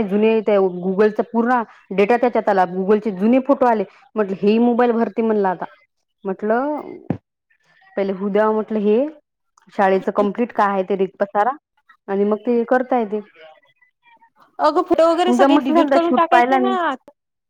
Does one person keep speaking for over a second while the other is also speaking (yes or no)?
yes